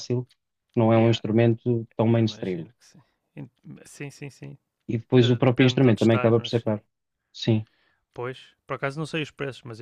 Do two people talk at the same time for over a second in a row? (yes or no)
yes